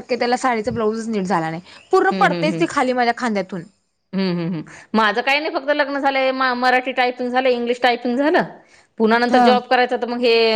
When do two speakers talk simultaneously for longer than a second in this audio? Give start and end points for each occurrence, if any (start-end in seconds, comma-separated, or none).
none